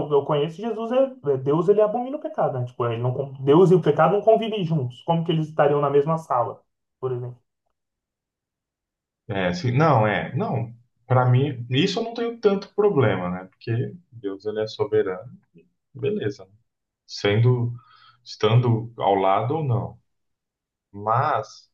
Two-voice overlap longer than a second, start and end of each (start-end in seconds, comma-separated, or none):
none